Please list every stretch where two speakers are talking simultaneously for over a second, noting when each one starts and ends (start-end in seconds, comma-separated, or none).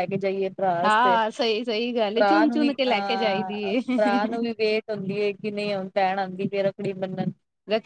2.1-3.8